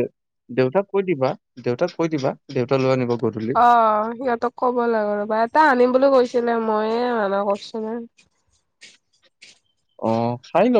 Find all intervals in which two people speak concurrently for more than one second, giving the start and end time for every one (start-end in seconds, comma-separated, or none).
none